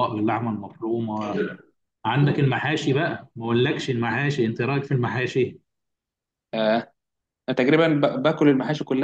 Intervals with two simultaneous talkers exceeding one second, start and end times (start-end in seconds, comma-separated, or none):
none